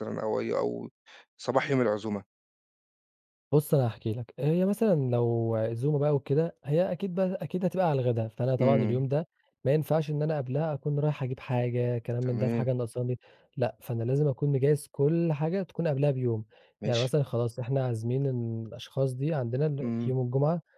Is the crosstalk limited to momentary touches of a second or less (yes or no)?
yes